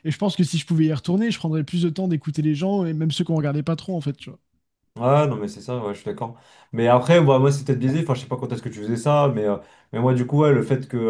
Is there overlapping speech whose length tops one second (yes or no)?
no